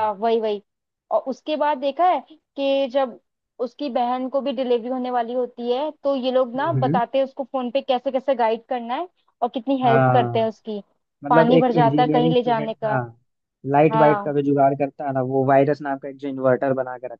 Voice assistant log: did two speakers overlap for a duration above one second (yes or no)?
yes